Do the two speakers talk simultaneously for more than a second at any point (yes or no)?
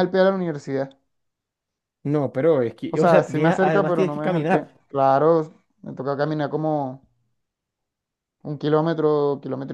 yes